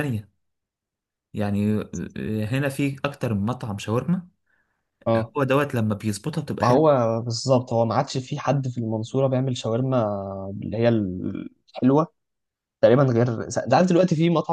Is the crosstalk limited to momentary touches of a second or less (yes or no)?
yes